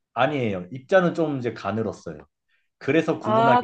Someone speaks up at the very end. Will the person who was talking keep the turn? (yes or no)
no